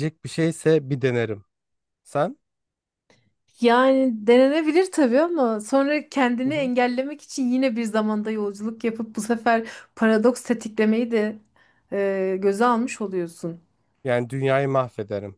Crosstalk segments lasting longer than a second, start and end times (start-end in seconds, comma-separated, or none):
none